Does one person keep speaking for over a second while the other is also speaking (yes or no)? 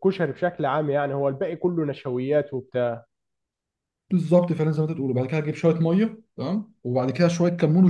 no